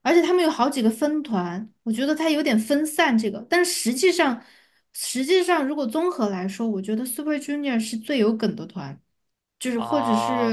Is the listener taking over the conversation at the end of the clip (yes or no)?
yes